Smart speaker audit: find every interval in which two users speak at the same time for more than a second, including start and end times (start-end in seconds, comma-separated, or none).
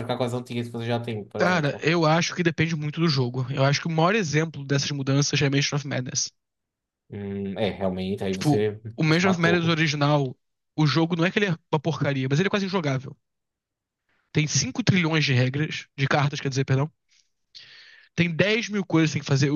8.3-9.7